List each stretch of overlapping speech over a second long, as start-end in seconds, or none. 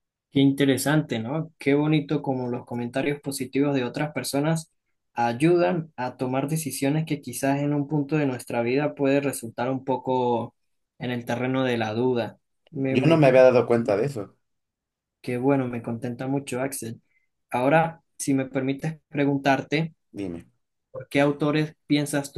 none